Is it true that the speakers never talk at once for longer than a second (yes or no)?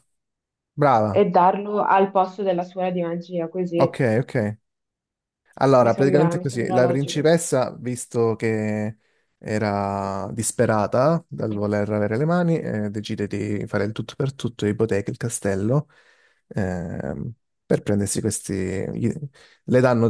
no